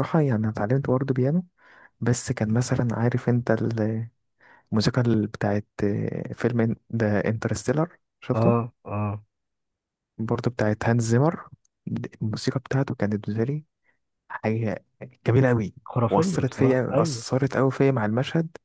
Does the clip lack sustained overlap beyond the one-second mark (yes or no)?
no